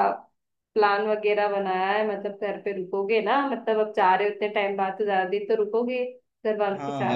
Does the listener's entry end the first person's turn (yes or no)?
yes